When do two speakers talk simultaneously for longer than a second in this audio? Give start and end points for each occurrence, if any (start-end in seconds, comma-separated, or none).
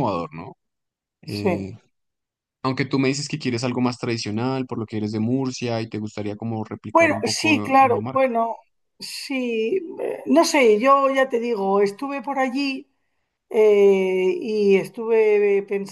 6.9-8.3